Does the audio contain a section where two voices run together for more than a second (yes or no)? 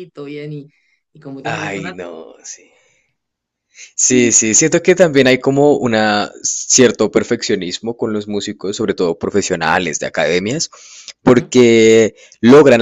no